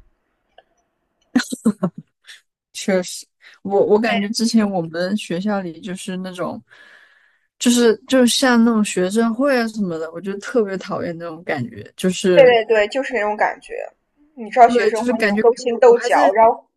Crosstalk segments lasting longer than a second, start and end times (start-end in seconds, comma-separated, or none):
14.7-16.2